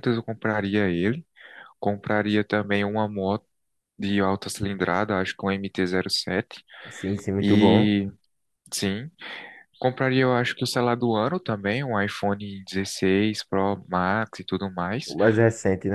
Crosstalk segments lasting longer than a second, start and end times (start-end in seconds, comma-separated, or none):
none